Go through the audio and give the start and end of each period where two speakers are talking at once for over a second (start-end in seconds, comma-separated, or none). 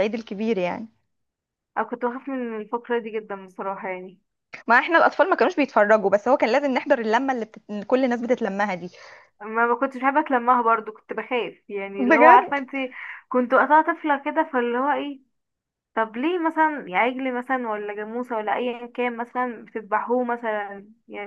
none